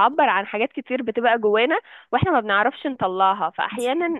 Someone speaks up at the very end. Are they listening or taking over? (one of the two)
listening